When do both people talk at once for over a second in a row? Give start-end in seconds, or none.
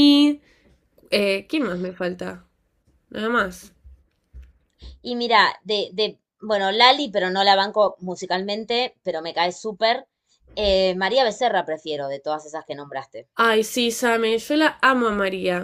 none